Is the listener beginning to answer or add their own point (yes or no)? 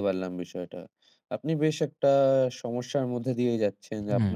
no